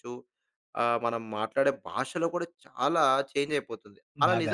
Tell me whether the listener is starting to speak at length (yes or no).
no